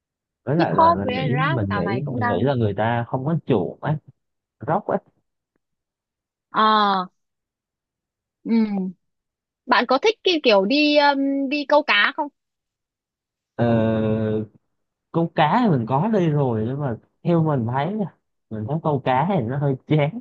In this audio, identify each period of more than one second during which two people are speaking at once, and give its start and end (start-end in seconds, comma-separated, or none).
0.6-2.5